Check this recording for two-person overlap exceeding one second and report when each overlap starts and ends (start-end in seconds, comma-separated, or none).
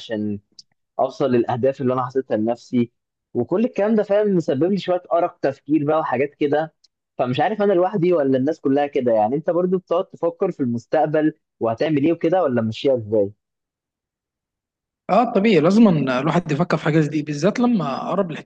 none